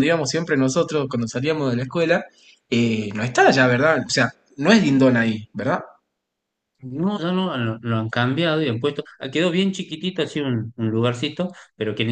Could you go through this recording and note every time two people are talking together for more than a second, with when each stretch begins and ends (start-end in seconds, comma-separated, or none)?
none